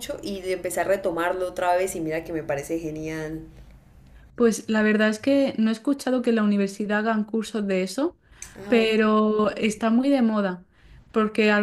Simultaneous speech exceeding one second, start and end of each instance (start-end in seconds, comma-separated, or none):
none